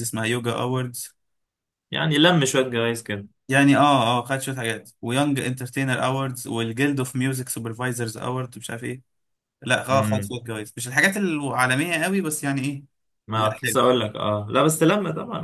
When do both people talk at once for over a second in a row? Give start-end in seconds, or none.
none